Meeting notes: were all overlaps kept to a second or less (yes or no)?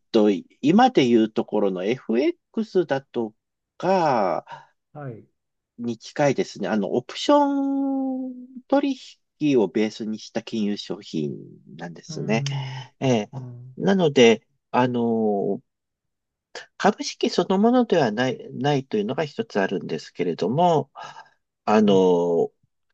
yes